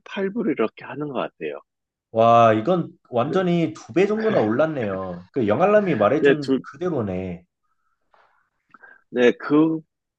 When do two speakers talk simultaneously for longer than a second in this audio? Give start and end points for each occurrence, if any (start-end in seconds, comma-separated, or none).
none